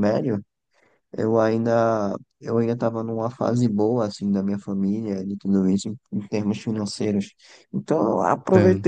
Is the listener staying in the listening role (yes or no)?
yes